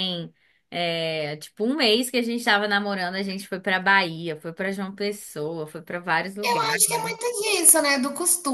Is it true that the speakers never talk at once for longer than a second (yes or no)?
yes